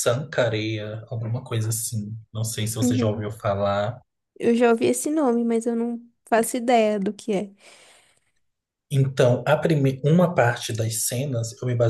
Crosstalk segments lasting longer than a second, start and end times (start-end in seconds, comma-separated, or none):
none